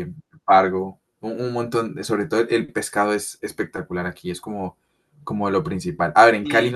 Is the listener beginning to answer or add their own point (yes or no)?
no